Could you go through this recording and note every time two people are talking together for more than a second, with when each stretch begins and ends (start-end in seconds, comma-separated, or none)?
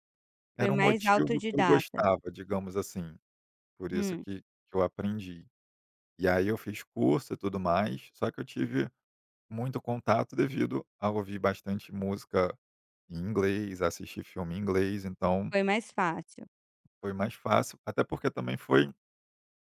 0.6-2.0